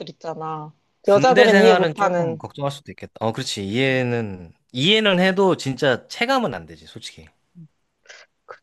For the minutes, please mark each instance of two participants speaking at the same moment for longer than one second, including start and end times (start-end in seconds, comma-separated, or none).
1.0-2.4